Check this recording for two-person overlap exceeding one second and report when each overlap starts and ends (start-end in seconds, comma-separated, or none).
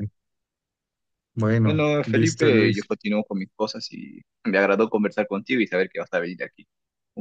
1.6-2.9